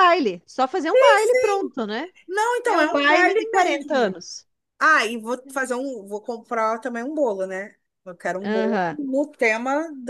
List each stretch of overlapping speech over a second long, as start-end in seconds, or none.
2.6-4.2